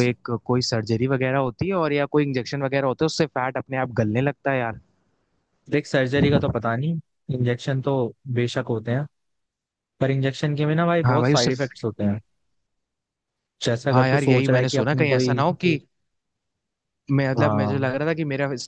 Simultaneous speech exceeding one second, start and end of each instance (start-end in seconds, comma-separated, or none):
13.9-15.4